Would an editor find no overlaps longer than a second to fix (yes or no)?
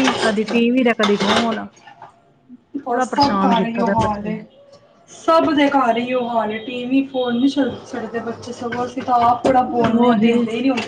no